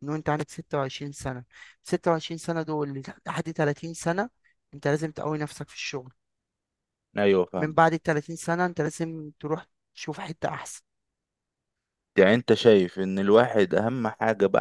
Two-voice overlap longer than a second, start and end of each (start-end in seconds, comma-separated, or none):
none